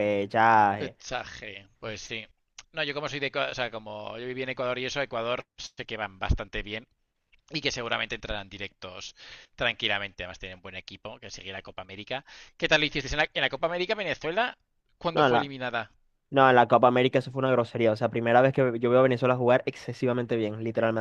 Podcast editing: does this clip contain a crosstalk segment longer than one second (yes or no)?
no